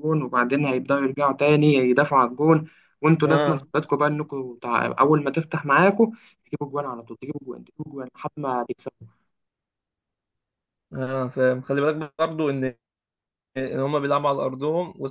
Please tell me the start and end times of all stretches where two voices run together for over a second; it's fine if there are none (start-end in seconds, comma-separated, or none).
none